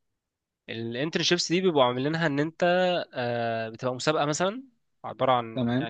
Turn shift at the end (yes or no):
no